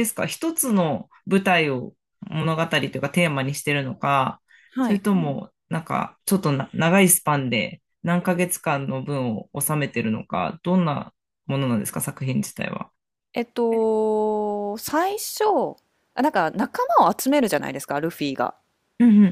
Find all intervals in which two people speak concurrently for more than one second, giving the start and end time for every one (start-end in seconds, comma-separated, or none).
none